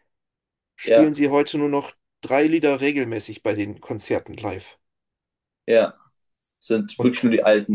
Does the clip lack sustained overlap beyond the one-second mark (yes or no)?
yes